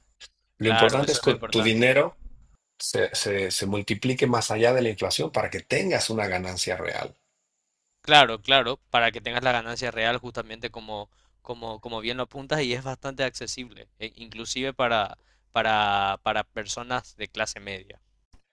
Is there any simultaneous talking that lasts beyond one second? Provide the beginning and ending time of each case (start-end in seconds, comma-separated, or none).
0.6-1.9